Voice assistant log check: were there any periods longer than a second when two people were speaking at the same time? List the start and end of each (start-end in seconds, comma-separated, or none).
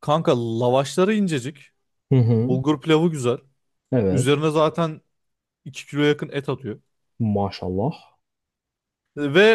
none